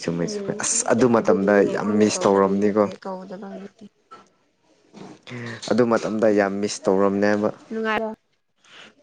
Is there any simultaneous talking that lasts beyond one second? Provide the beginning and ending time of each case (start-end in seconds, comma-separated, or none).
1.2-2.8